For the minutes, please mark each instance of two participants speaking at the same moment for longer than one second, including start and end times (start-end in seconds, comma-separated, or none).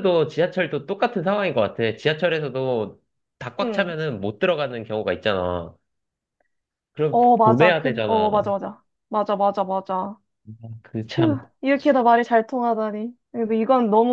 7.1-8.5